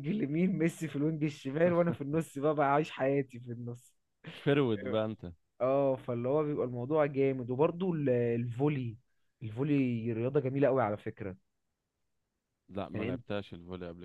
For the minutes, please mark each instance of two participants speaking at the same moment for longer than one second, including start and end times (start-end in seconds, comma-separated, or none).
none